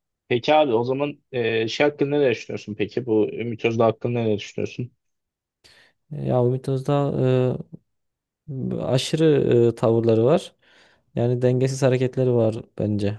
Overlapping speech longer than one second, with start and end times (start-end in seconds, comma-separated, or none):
none